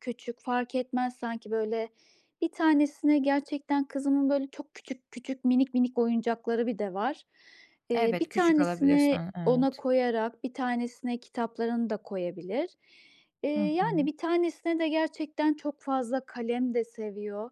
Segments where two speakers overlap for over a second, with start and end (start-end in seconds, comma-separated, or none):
7.9-9.8